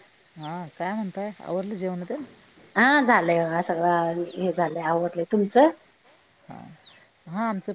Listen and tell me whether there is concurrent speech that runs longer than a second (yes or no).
no